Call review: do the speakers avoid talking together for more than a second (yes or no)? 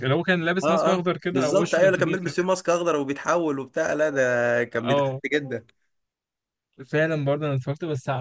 no